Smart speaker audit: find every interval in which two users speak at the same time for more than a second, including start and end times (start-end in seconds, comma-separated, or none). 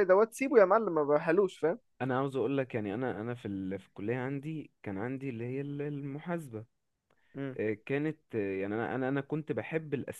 none